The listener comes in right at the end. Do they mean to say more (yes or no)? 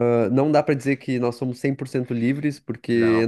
no